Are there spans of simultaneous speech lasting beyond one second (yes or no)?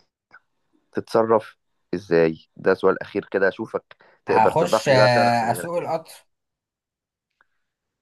yes